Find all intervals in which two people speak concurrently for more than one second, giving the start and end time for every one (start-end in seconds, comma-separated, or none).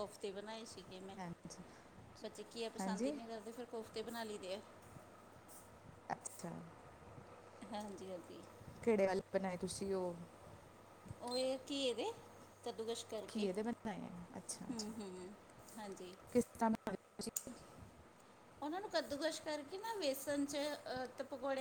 none